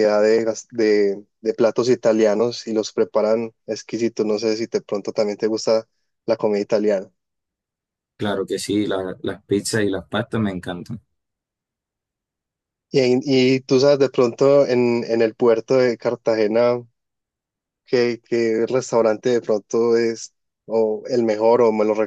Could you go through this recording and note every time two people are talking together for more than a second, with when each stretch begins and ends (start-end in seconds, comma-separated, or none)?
none